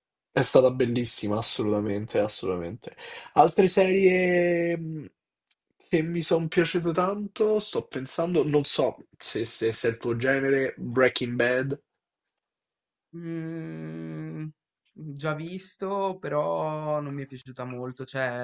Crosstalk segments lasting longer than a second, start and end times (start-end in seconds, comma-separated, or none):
none